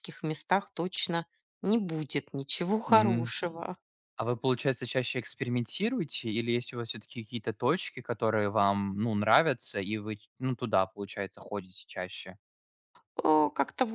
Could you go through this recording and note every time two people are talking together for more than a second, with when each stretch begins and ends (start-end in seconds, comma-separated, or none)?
none